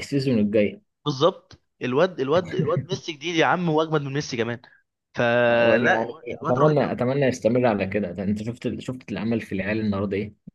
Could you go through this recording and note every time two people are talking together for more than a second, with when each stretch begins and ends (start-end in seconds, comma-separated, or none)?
5.5-7.0